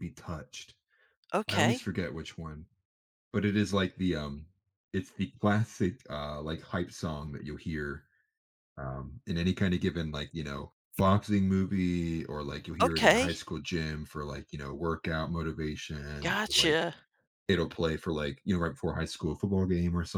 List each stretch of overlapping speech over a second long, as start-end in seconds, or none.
none